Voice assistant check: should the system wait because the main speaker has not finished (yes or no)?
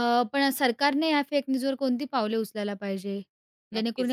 no